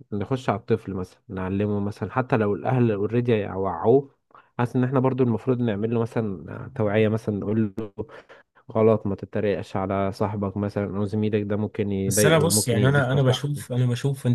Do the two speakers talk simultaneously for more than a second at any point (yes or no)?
yes